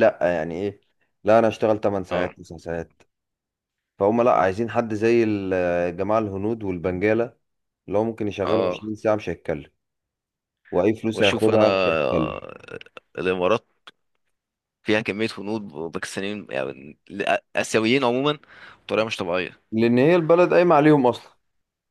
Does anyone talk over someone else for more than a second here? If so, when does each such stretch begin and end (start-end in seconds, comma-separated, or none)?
11.2-12.5